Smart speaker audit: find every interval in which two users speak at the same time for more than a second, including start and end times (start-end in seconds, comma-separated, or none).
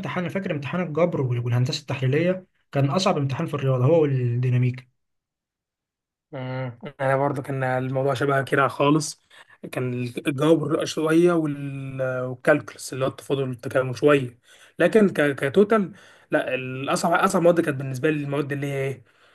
none